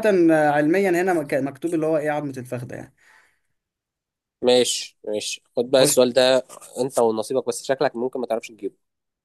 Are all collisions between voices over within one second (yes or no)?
yes